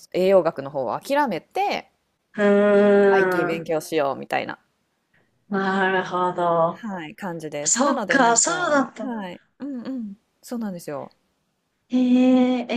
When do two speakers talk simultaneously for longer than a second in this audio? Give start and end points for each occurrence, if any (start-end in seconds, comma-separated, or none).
7.7-9.1